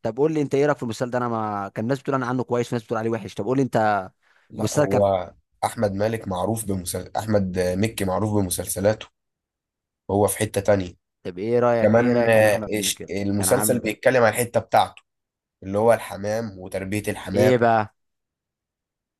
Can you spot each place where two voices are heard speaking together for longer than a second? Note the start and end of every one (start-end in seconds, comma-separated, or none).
11.8-14.0